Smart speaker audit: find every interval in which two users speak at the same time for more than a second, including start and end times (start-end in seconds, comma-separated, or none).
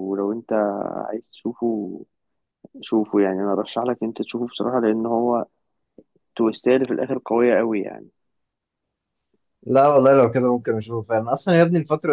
none